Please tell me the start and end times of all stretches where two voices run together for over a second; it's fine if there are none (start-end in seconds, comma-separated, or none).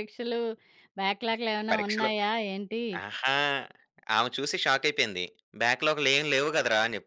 none